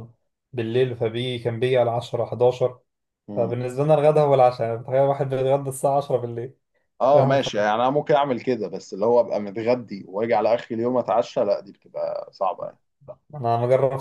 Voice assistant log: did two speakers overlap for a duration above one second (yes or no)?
no